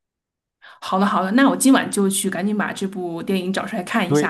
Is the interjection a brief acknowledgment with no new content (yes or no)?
no